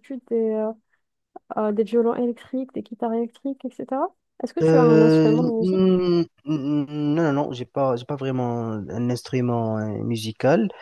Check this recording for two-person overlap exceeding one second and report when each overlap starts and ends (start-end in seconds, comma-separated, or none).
4.6-6.0